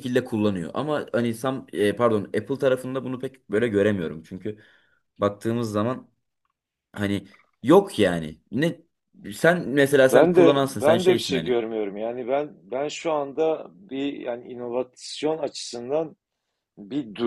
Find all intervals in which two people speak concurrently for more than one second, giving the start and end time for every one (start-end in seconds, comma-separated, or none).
10.1-11.6